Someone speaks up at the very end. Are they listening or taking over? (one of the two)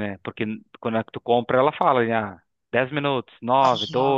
listening